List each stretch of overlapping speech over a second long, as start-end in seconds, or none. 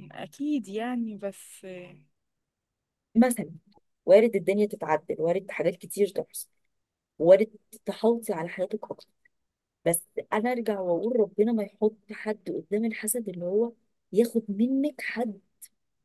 none